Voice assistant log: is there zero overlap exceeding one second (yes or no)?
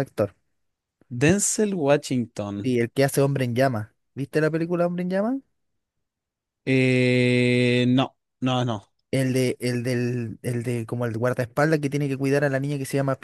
yes